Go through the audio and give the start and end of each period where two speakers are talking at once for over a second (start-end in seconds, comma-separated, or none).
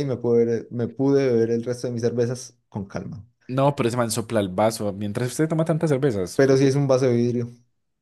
none